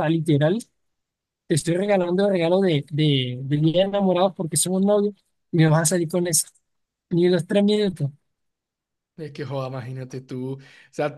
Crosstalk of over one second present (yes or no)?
no